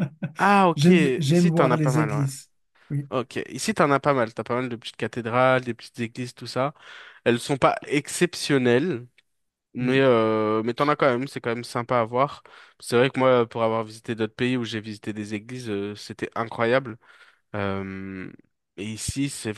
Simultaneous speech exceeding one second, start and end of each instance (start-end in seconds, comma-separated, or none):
0.8-2.3